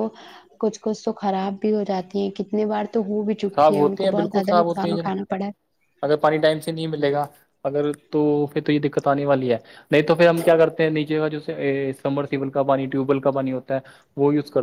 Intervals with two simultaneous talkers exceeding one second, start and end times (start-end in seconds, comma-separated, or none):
3.4-5.1